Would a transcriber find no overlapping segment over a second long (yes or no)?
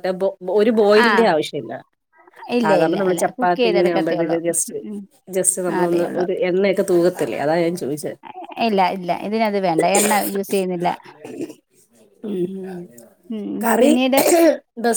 no